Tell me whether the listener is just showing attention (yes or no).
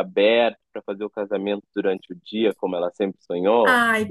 no